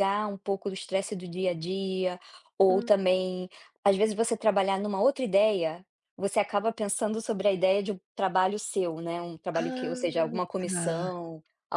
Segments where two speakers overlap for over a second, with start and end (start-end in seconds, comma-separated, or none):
9.6-11.1